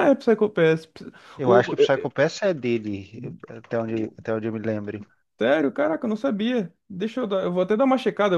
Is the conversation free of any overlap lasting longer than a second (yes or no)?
yes